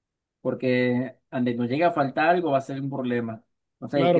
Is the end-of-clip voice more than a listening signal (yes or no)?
yes